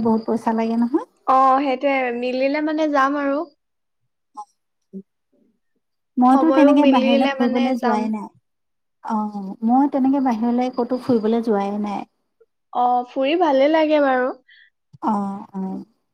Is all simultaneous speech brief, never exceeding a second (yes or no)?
no